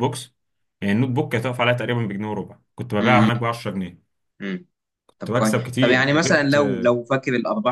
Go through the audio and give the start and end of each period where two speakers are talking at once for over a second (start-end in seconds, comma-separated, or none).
5.2-6.6